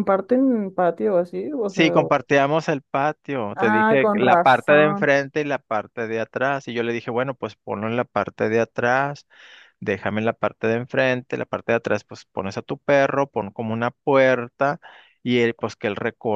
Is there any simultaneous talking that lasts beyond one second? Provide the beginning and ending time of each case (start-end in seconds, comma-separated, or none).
3.5-5.1